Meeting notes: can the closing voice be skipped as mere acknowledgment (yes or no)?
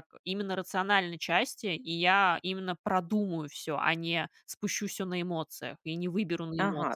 no